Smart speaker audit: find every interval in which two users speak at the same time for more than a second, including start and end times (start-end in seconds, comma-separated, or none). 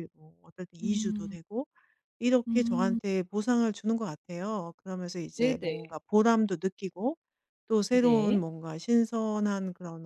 none